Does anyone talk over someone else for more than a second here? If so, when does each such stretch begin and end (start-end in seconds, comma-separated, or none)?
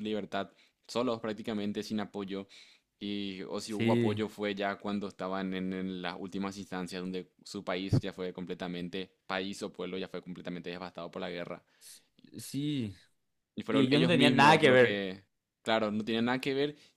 13.7-15.1